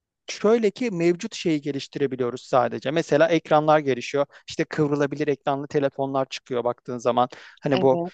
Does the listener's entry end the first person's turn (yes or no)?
no